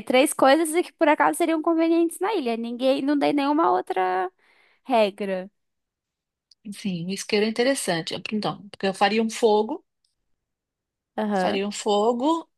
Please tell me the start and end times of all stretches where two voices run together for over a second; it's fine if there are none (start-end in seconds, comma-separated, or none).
none